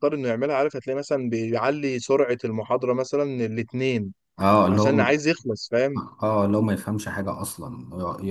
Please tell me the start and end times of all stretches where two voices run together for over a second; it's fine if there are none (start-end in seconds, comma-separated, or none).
none